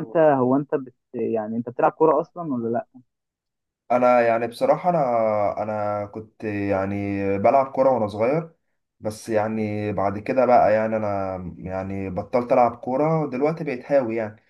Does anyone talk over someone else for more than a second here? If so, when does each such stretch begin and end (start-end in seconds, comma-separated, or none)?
none